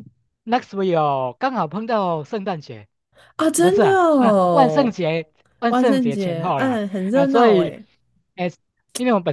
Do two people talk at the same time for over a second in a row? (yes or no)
yes